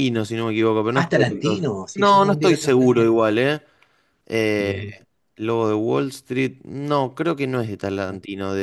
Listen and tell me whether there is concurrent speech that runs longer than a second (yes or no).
yes